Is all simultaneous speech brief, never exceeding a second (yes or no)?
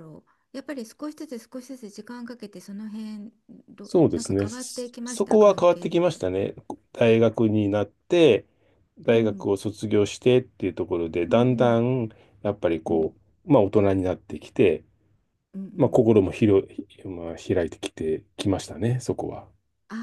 no